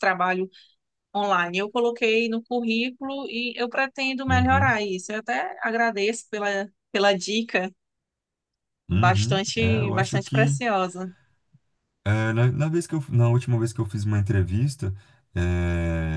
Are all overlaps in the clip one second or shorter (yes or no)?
no